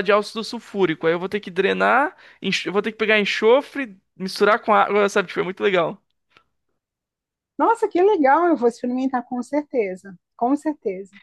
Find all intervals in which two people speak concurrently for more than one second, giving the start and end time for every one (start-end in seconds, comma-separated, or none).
none